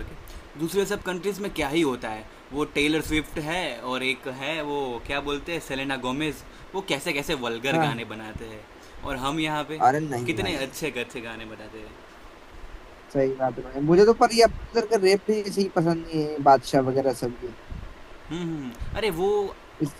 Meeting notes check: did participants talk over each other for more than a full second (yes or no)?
no